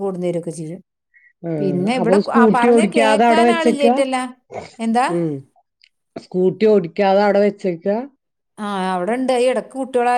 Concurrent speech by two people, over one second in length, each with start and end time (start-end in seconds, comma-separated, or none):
2.0-3.9